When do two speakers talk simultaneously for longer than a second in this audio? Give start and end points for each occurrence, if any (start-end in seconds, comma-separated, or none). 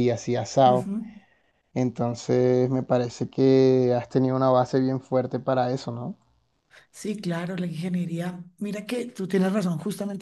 none